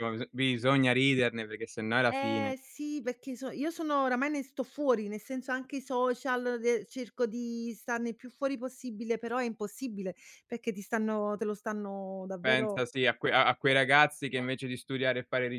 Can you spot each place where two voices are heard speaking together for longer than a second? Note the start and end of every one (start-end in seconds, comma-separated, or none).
none